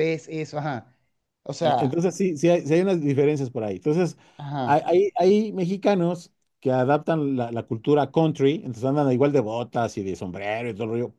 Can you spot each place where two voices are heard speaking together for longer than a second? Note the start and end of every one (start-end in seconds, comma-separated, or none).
none